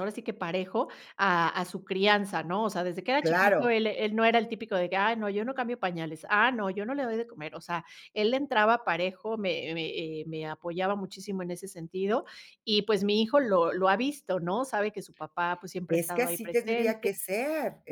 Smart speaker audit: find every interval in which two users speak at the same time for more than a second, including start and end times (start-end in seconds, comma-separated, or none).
15.9-17.1